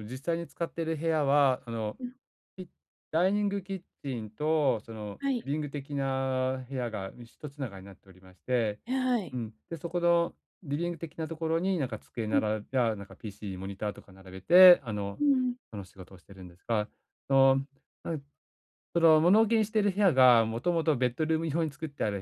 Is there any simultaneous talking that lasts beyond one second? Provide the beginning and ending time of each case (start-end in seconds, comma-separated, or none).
none